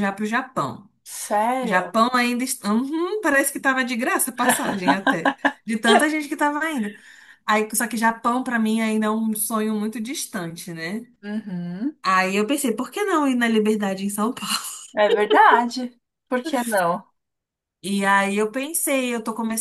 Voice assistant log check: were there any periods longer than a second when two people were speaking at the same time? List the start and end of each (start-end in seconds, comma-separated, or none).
none